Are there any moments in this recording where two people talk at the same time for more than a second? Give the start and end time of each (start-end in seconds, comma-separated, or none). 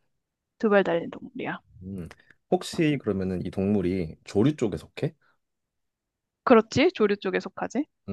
none